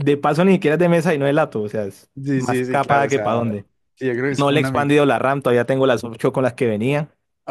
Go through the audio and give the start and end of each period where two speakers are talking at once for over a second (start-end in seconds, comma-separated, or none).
2.1-3.6